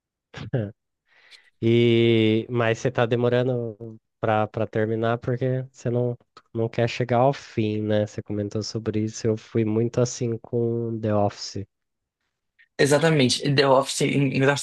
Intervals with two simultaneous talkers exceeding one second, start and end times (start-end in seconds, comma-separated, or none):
none